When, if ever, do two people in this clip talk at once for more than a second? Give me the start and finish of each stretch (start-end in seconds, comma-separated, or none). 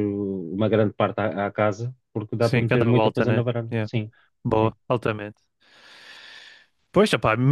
2.4-3.9